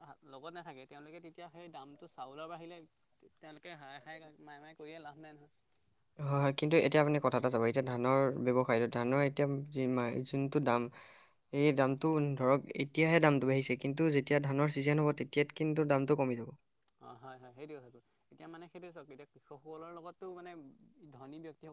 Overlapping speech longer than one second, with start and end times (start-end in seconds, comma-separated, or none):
none